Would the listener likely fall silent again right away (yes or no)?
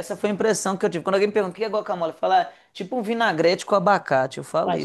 no